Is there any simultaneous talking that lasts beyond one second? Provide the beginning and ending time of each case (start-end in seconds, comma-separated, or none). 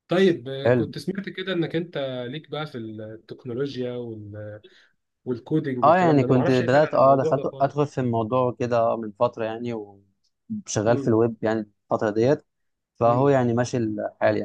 5.8-7.8